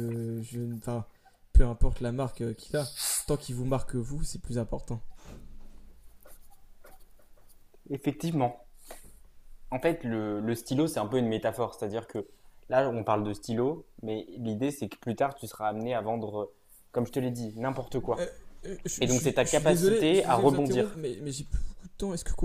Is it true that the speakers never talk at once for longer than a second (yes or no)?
no